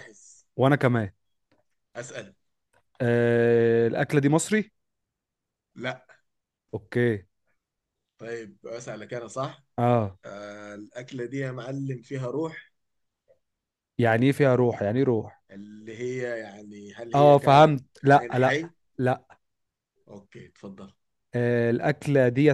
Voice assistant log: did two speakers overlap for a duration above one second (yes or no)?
yes